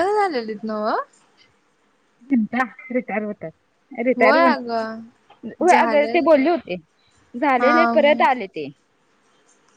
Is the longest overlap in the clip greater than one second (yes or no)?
yes